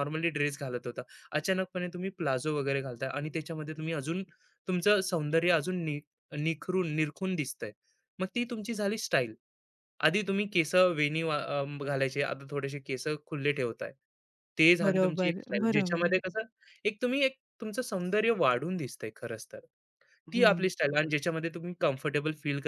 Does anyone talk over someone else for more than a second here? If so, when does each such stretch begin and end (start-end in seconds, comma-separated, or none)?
14.8-16.2